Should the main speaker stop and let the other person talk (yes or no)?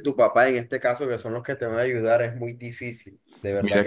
yes